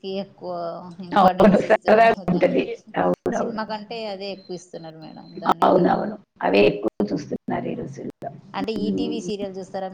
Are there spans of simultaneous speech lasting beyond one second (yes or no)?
yes